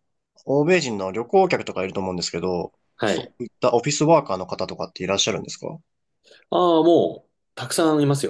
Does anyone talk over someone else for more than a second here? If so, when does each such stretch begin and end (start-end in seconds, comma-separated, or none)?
none